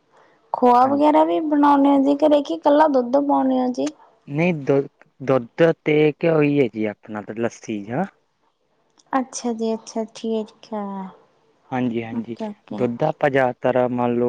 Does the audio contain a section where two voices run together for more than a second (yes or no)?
no